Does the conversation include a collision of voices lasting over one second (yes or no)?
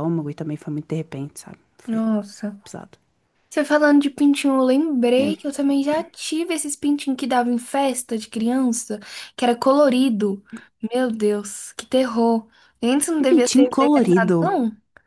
yes